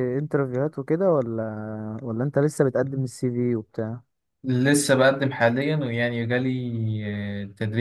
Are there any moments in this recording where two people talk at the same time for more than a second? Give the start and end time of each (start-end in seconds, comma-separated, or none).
none